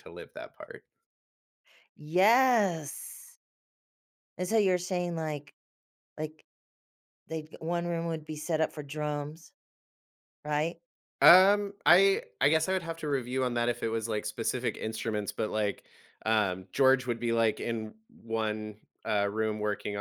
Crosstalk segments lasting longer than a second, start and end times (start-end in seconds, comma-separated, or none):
none